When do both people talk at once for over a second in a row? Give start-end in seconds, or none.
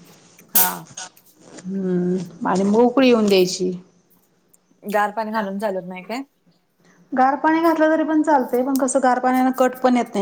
none